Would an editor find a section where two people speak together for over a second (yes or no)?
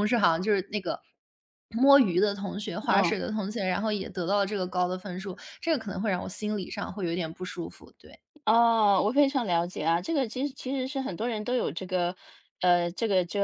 no